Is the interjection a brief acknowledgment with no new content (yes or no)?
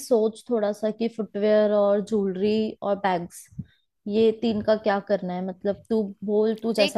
no